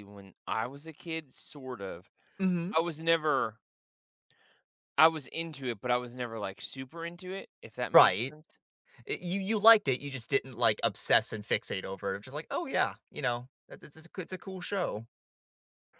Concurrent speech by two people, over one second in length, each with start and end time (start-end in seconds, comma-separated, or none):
none